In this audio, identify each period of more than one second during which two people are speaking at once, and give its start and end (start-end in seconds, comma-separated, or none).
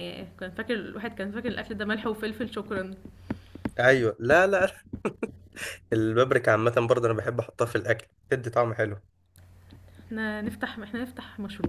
none